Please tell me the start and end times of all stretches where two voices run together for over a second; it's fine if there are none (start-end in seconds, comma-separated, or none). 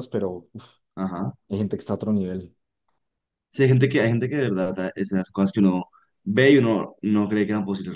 none